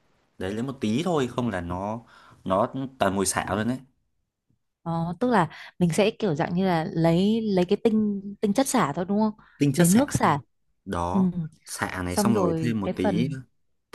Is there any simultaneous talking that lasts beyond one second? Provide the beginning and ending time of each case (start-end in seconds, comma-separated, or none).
12.1-13.3